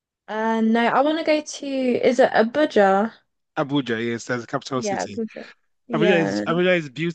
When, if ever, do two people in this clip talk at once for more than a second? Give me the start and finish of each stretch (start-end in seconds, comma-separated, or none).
none